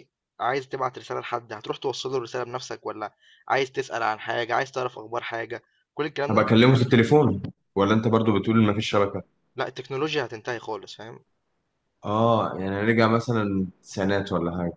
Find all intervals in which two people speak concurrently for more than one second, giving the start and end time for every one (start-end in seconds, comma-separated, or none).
none